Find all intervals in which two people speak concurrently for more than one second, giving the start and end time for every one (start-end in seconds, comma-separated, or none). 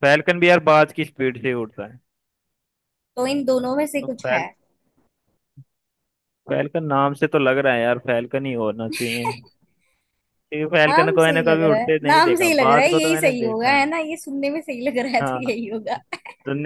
10.9-13.8